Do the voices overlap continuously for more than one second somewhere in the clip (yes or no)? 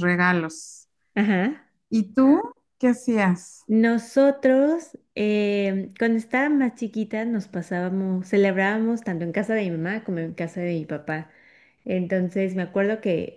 no